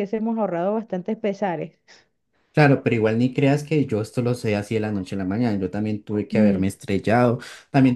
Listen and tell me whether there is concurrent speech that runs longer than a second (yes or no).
no